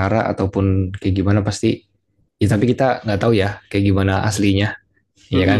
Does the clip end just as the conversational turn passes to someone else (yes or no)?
yes